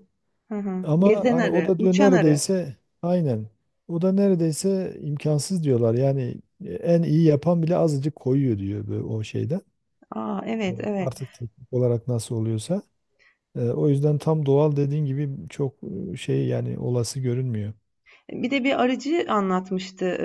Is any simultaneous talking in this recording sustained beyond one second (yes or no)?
yes